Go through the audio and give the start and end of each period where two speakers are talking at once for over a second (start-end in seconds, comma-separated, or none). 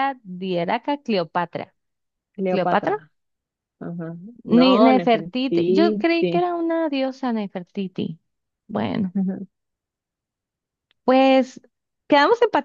4.5-6.1